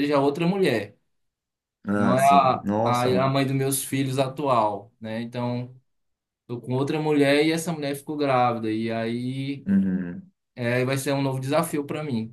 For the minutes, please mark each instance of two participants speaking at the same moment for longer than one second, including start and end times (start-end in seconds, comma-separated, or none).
1.9-3.3